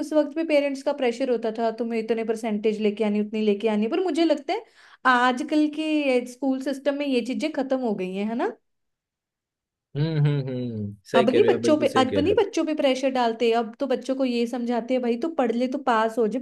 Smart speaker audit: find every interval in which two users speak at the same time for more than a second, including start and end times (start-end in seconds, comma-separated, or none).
11.2-12.4